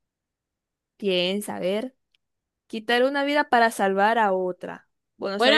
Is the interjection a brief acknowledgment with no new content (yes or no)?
no